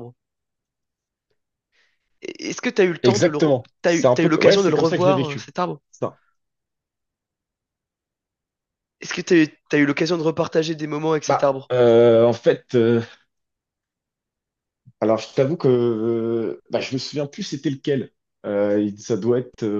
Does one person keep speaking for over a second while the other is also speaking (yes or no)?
yes